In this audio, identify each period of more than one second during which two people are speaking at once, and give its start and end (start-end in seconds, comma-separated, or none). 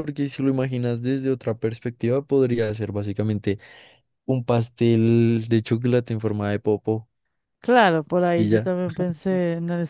none